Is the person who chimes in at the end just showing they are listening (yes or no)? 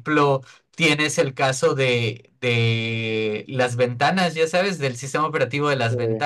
yes